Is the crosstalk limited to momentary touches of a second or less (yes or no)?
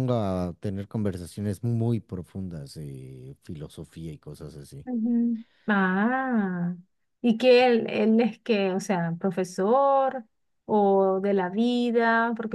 yes